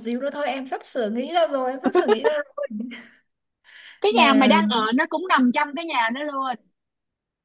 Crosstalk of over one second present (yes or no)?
no